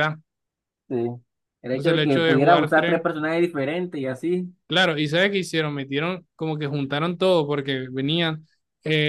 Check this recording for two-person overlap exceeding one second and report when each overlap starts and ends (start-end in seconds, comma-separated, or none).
1.7-3.0